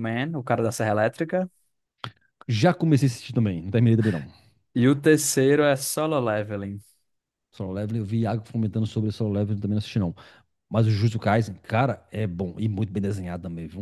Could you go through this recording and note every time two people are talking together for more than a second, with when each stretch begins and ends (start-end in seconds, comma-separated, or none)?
none